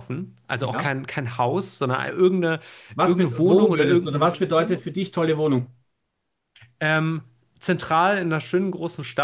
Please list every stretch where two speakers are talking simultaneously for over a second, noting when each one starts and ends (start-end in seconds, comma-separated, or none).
3.0-4.8